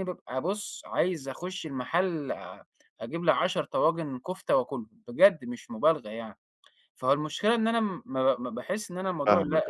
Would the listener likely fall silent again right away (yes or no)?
yes